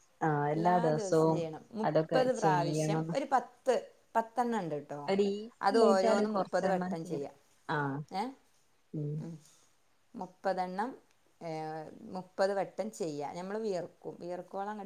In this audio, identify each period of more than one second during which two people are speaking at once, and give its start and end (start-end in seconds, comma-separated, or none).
5.7-7.3